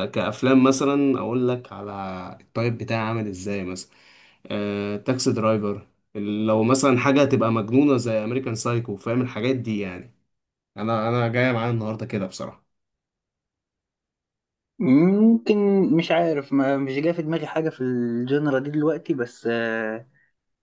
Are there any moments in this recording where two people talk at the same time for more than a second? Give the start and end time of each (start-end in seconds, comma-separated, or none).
none